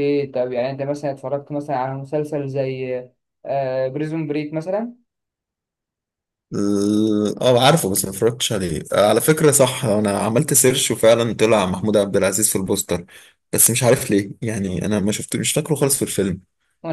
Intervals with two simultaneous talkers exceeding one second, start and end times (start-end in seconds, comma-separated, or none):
none